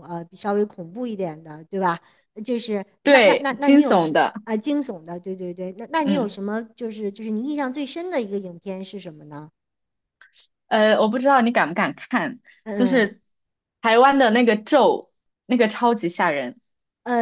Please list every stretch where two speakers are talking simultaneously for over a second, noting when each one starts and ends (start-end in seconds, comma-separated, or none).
3.0-4.3